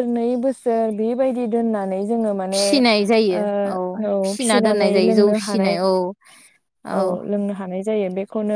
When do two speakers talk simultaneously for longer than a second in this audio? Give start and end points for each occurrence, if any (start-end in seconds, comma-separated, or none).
4.2-5.8